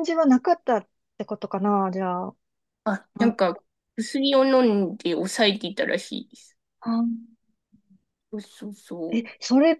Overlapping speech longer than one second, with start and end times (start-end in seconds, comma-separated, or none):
none